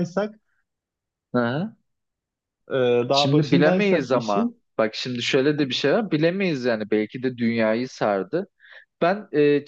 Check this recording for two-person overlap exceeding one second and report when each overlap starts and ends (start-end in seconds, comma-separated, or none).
3.1-4.6